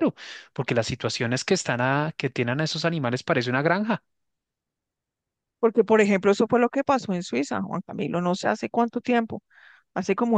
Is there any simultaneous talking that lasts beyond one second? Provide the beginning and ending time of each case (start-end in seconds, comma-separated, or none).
none